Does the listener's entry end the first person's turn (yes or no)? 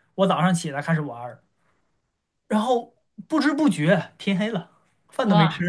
yes